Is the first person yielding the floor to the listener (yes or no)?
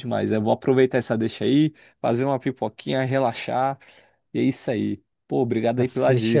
yes